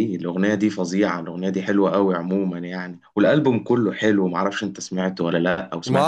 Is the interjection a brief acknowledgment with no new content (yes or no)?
no